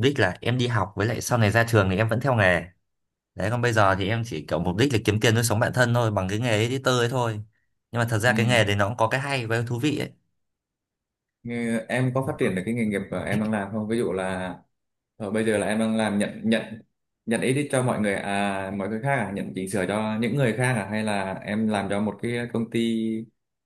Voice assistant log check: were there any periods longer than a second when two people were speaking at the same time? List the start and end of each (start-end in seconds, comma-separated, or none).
none